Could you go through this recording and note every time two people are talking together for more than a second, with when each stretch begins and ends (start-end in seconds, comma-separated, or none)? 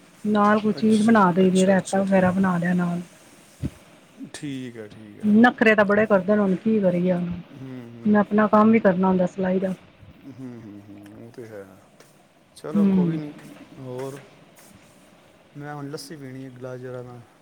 0.8-2.3